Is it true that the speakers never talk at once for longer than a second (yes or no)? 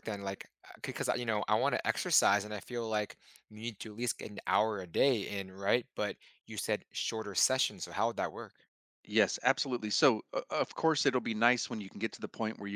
yes